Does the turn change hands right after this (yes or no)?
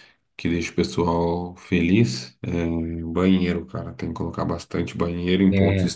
no